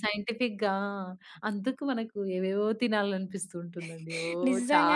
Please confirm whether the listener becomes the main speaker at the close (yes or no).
yes